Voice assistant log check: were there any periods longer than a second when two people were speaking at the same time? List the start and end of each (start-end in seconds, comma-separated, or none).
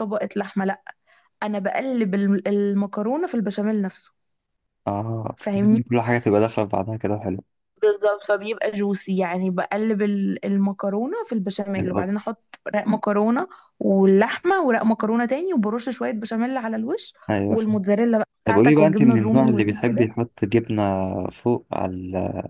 18.4-20.1